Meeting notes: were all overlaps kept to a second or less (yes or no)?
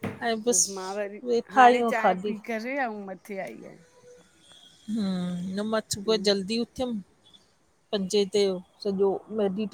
no